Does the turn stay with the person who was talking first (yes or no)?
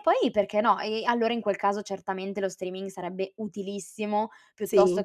yes